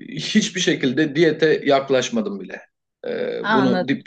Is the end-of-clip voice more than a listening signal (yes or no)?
no